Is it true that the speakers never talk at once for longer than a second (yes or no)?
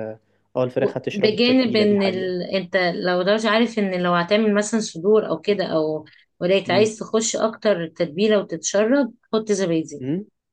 no